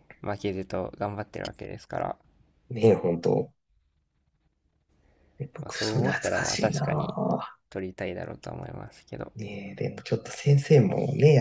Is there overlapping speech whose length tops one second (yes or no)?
yes